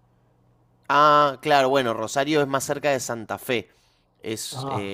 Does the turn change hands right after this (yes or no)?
no